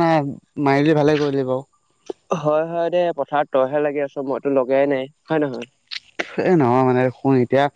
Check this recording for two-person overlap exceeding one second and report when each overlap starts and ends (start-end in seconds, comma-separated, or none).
none